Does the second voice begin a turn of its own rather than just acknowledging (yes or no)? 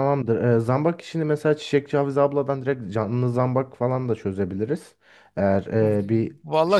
yes